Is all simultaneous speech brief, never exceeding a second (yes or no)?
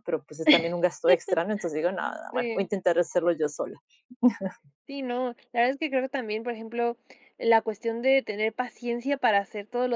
yes